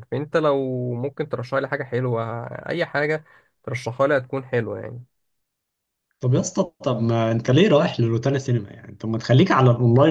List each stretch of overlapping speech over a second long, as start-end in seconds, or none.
none